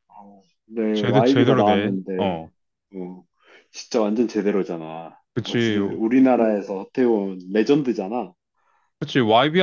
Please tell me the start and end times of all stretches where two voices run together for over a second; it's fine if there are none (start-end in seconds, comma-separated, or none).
0.9-2.4